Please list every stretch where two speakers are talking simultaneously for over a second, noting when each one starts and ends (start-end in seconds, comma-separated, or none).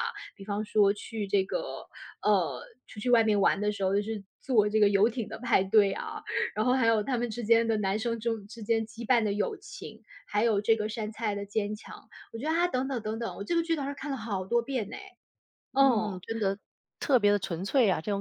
none